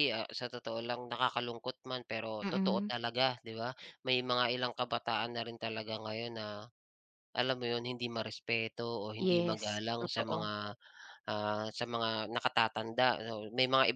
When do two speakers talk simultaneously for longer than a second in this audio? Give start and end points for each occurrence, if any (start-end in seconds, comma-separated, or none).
9.2-10.5